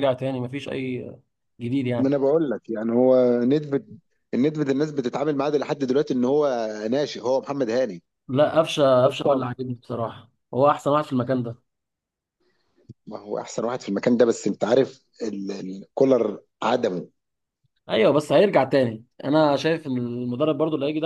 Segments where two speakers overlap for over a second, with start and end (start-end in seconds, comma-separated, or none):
none